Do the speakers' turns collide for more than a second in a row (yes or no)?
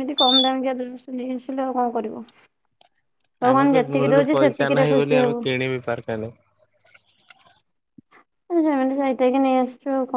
yes